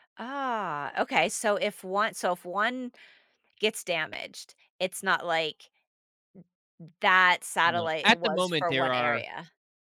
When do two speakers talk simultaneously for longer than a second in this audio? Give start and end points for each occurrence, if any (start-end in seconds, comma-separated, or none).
7.6-9.2